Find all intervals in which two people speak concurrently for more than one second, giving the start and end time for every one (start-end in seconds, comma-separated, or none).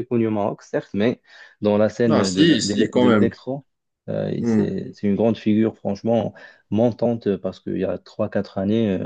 2.0-3.3